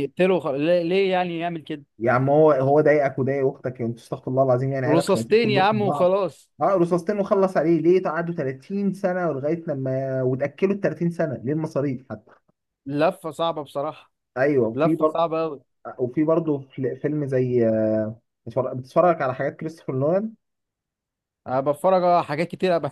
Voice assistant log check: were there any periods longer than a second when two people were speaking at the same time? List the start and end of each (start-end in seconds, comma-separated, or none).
4.9-6.2